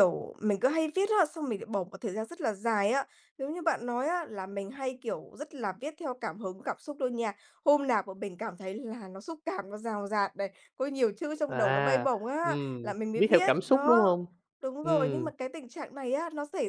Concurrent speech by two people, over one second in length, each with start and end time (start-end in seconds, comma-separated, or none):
11.5-14.2